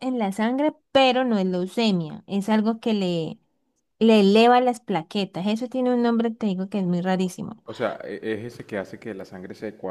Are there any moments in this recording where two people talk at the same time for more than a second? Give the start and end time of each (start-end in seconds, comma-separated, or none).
none